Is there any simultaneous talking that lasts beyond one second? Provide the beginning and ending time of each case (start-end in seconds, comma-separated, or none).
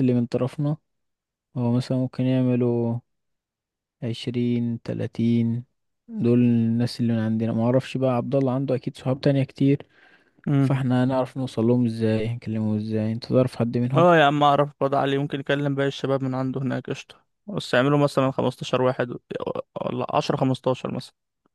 none